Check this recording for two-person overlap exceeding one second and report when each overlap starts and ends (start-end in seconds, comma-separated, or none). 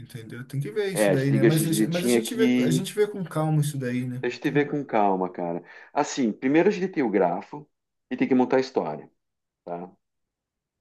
0.9-2.9